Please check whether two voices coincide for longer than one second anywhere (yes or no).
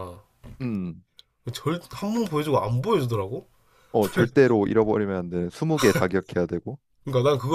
no